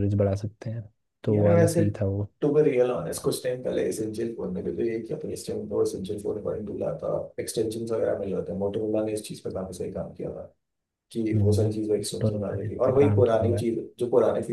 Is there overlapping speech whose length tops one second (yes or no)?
yes